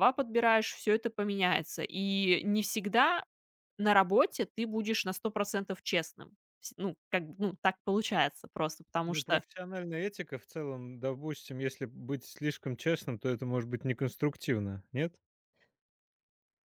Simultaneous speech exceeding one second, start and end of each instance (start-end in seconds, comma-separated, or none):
none